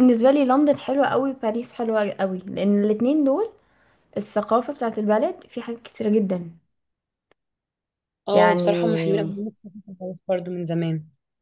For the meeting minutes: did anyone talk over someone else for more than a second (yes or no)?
no